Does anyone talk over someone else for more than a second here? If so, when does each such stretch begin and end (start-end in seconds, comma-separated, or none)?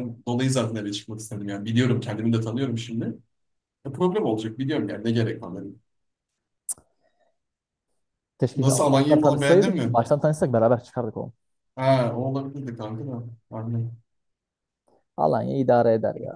8.5-10.0